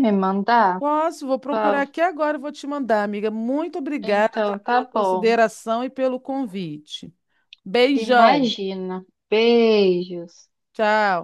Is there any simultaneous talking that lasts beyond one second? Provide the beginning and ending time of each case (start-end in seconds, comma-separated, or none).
4.0-5.3